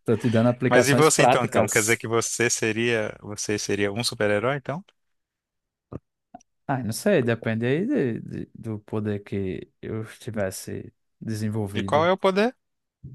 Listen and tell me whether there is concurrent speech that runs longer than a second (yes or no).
yes